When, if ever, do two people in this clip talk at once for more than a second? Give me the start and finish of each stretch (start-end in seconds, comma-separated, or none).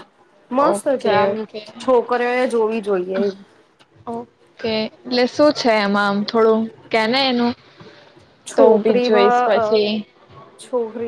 8.6-9.8